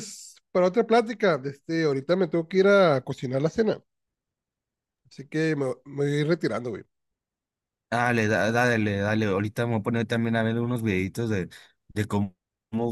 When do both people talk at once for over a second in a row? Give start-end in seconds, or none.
none